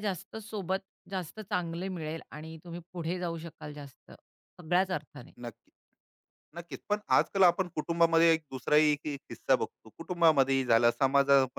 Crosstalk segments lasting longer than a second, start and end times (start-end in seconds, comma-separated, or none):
none